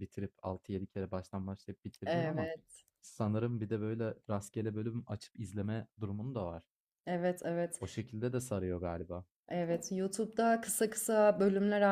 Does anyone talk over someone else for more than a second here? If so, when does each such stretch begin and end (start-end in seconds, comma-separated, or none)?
none